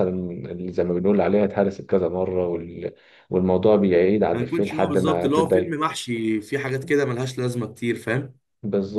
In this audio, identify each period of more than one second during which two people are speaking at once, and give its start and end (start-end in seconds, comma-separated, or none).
4.3-5.8